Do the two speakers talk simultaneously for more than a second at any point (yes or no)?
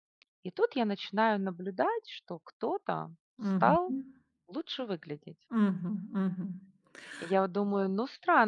no